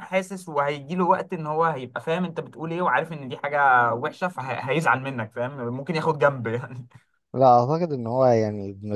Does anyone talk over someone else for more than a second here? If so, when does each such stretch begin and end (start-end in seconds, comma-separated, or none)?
none